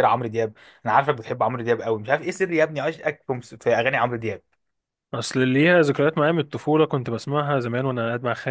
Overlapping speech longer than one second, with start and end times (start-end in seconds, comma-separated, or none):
none